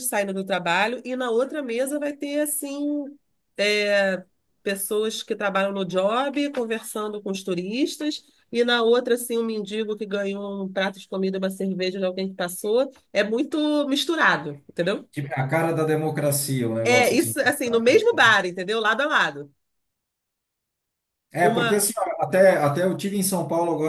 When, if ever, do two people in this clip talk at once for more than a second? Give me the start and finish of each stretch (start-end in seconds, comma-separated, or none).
16.8-18.2